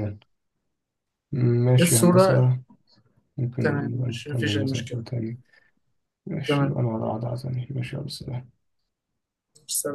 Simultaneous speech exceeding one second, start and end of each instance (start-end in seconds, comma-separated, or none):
3.6-5.0